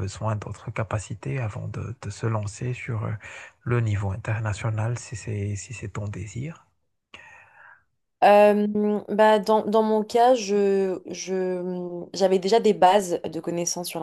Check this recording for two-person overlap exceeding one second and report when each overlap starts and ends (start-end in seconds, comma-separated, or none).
none